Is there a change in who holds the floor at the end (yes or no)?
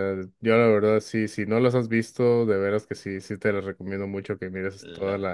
no